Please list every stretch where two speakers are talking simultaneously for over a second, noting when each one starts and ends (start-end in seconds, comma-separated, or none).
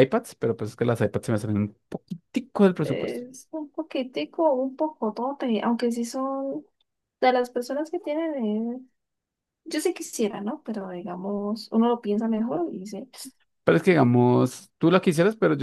none